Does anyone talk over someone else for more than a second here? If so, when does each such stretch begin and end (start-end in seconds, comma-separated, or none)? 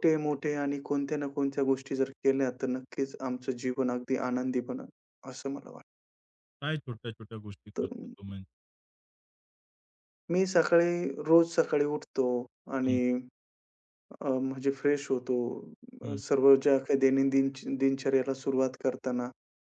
none